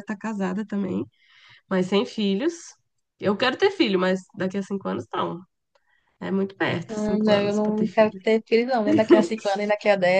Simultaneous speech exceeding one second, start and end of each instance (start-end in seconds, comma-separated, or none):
6.9-8.2